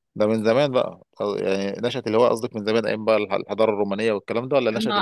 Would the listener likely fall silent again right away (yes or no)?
no